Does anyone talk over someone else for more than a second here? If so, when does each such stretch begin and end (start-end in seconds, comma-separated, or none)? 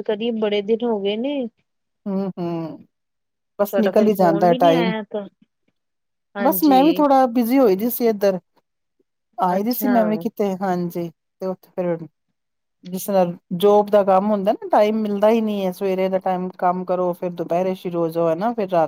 3.6-4.9